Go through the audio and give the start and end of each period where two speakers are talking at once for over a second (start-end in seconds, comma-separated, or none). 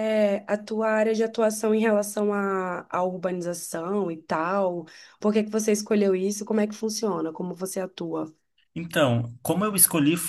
none